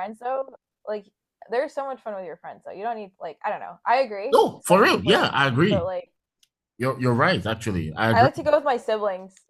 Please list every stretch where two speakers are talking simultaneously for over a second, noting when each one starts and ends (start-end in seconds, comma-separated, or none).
4.3-5.9